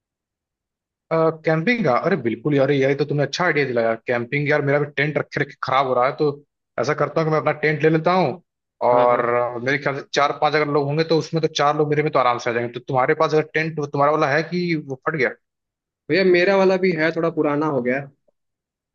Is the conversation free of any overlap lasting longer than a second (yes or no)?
yes